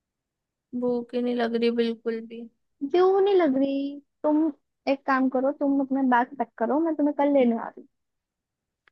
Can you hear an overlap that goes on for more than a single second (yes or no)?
no